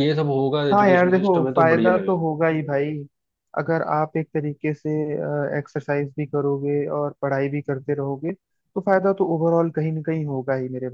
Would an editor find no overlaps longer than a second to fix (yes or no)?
no